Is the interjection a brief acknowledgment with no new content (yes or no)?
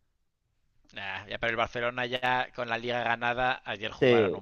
yes